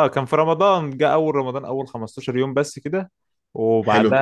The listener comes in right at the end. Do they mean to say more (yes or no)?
no